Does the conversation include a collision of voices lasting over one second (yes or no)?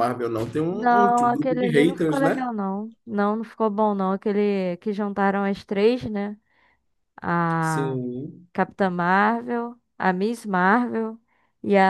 yes